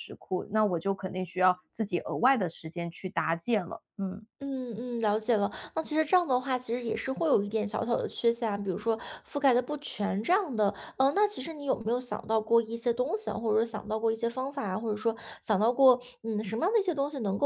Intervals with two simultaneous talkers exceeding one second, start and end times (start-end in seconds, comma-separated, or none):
none